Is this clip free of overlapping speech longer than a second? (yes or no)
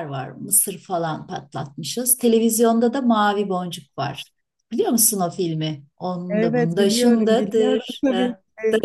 no